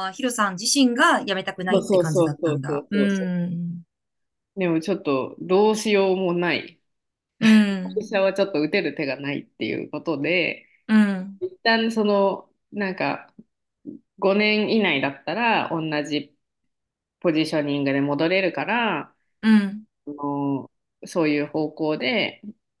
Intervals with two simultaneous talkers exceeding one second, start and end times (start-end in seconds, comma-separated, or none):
1.7-3.0